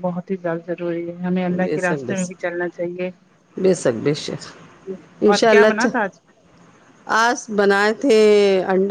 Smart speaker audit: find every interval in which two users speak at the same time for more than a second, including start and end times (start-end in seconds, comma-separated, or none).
none